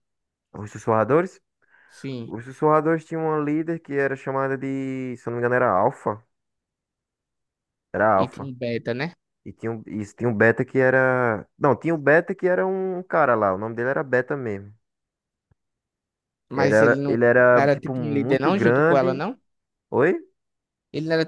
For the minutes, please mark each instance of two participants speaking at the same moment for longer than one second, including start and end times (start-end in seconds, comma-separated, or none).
16.5-19.3